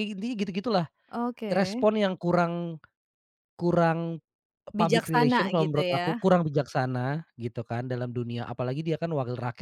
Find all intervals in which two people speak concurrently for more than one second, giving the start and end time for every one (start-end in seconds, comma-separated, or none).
4.8-6.1